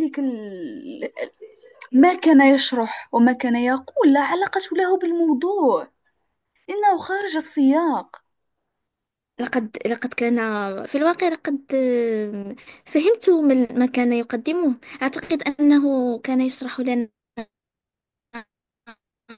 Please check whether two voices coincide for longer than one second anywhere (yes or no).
no